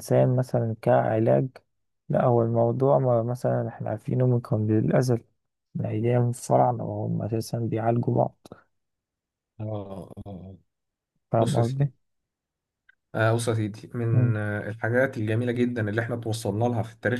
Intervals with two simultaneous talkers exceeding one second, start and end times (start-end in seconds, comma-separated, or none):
none